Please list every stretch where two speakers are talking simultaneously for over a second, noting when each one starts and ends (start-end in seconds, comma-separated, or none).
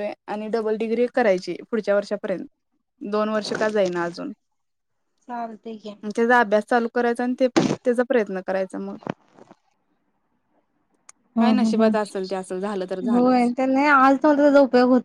11.4-13.5